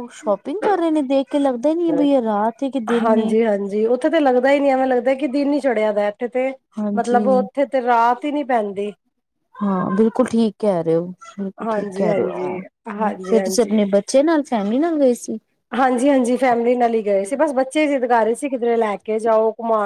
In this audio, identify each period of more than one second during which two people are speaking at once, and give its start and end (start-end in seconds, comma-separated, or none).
11.7-13.8